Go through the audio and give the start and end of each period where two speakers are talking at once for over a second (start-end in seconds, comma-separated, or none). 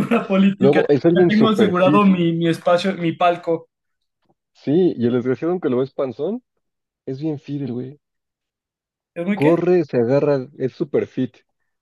0.6-2.0